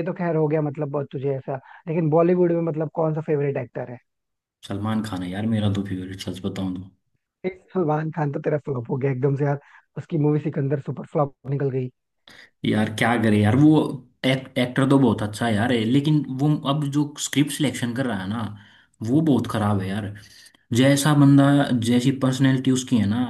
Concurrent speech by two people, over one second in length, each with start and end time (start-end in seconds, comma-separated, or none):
none